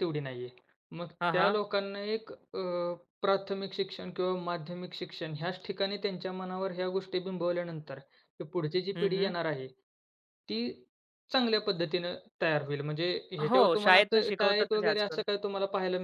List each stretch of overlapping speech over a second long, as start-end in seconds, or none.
13.5-15.2